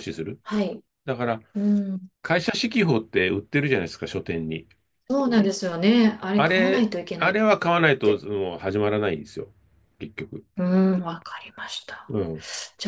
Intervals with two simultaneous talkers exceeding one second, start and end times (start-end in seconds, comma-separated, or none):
6.4-8.2